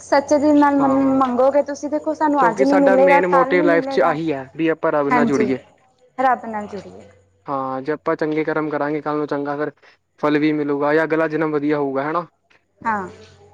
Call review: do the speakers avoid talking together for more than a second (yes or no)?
no